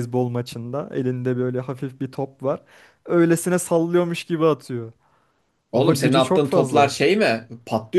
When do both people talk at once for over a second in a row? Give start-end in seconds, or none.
5.7-6.9